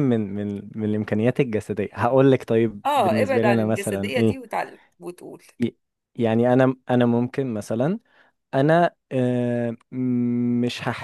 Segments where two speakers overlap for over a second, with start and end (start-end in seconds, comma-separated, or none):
2.9-4.4